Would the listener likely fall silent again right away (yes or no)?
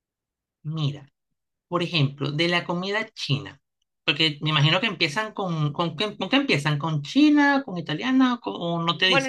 no